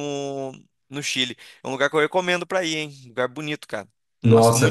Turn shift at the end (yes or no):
yes